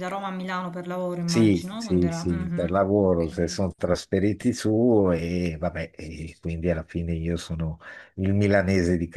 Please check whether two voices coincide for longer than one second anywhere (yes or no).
yes